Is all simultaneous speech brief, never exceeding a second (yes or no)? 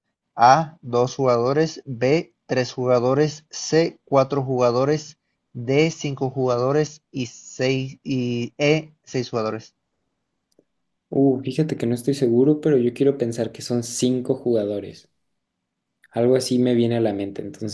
yes